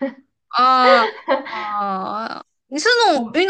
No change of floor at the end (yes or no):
yes